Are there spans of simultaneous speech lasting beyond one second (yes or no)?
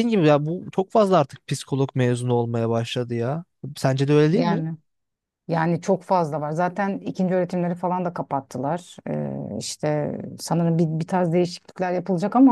no